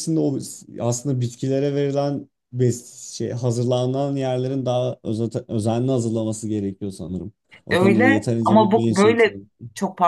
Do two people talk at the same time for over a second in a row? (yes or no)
yes